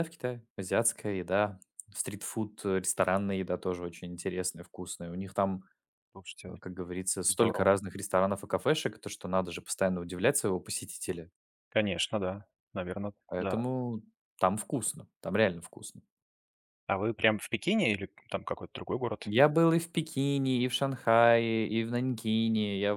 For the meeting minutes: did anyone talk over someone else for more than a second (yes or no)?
no